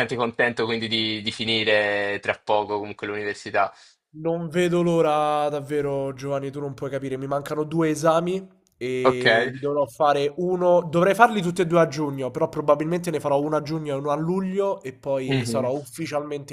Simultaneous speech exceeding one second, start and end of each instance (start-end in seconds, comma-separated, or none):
none